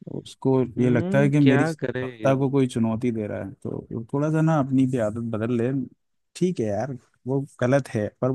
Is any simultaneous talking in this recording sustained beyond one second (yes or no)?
yes